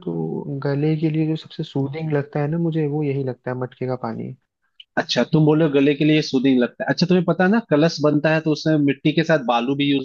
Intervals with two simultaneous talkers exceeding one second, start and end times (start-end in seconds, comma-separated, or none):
none